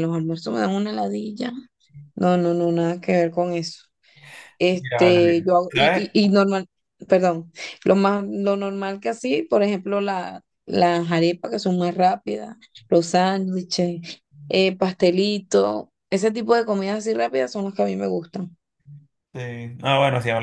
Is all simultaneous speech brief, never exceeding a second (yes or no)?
no